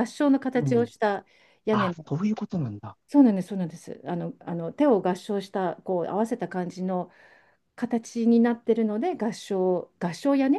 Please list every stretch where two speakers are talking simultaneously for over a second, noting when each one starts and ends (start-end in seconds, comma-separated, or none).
none